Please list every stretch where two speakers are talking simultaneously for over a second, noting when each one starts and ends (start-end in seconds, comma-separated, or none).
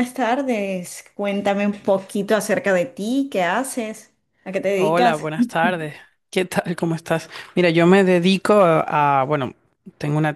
none